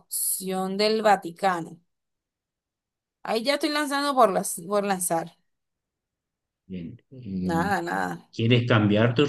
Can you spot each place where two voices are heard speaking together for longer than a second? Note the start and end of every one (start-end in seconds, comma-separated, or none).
none